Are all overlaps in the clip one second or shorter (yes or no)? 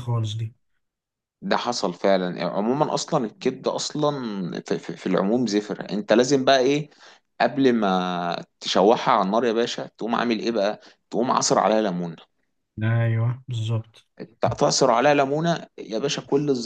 yes